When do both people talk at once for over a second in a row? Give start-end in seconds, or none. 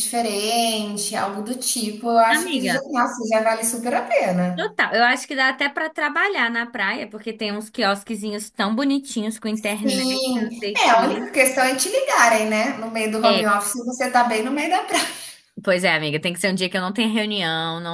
9.8-11.4